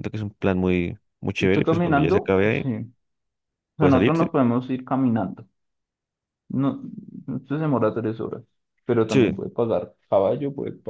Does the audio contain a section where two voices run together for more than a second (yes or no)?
yes